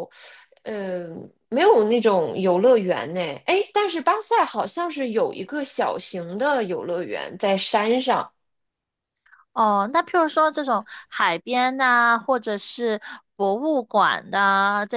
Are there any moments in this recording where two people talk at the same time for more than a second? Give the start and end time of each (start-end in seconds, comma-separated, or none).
none